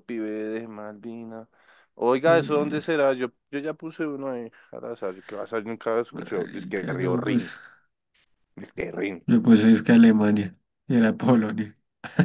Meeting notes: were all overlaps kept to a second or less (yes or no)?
no